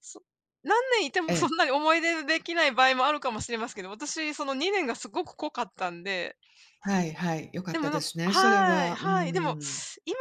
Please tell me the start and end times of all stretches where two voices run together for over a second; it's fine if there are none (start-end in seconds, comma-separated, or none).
7.7-9.6